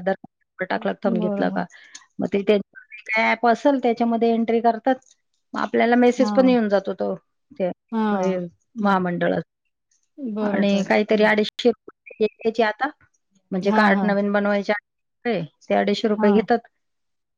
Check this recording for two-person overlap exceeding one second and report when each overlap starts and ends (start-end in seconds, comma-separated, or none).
none